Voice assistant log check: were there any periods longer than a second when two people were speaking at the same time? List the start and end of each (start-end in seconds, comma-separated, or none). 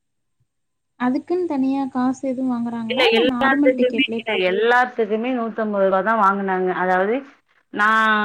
2.9-4.8